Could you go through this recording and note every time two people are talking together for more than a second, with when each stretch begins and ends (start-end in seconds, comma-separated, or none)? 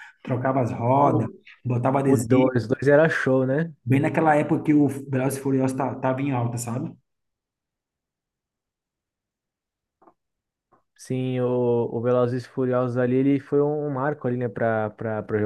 none